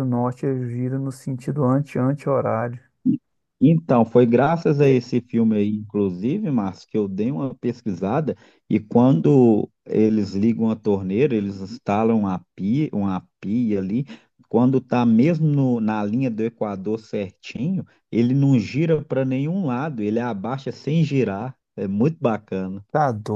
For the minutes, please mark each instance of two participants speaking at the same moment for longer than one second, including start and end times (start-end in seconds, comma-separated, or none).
none